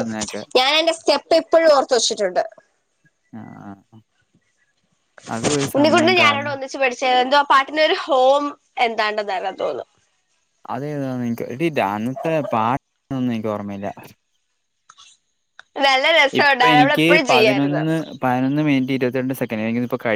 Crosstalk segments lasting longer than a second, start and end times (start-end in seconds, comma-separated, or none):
16.4-17.8